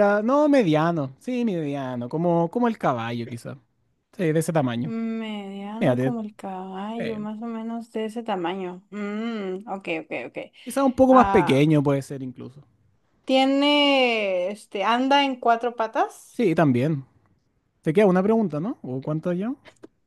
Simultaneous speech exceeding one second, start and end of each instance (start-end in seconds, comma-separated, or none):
none